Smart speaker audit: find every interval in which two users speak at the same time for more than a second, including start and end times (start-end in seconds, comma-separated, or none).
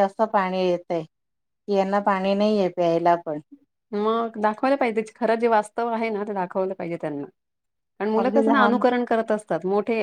none